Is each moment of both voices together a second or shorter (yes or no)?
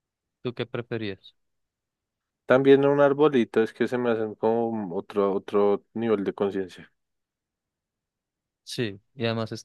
yes